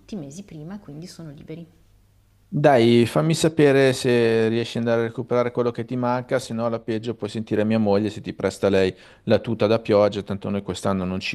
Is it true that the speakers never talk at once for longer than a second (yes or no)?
yes